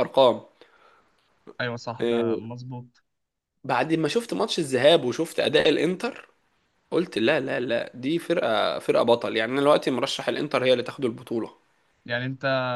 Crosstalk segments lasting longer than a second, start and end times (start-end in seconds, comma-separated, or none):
none